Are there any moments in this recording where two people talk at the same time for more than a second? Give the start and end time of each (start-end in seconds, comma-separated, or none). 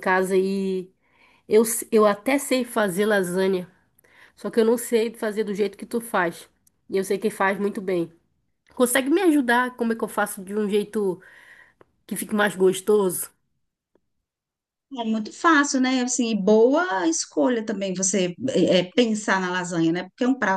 none